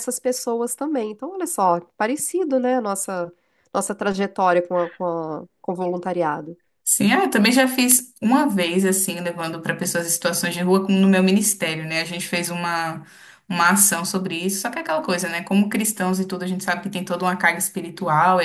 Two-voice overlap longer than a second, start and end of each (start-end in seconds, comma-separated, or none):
none